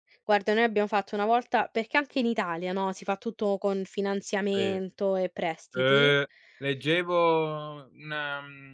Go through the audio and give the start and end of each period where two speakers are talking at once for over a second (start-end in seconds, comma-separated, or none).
none